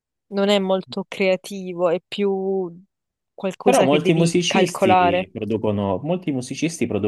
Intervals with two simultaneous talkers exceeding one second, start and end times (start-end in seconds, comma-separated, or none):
3.6-5.3